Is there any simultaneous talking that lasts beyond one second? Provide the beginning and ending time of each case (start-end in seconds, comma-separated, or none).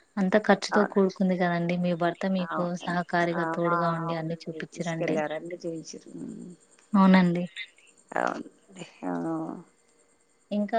2.5-5.1